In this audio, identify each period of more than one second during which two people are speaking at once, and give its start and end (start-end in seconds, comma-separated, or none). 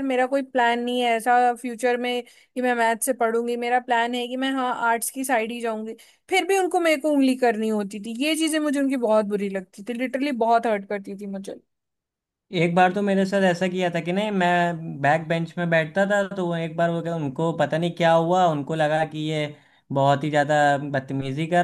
none